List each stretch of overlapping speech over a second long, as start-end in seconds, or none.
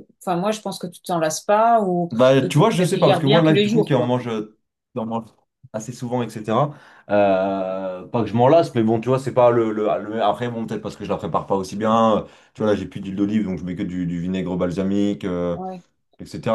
2.1-4.1